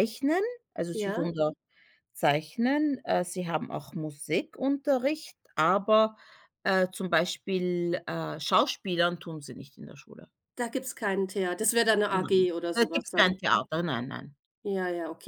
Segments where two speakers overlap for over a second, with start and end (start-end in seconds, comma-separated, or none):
12.1-13.7